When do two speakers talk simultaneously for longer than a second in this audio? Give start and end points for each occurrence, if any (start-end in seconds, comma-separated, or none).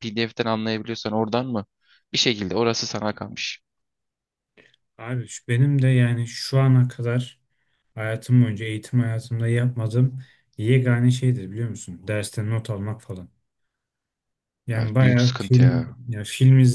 14.8-15.9